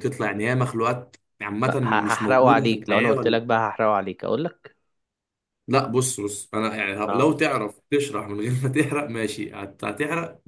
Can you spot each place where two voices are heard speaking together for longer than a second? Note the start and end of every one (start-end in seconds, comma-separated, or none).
1.6-3.4